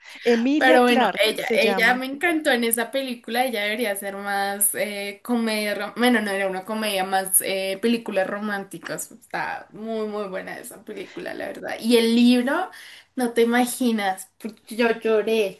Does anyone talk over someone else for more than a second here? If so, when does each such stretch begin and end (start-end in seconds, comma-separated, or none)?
0.6-2.0